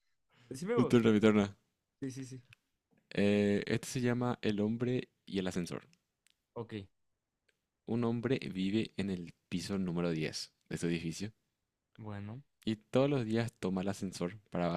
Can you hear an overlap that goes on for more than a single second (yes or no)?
no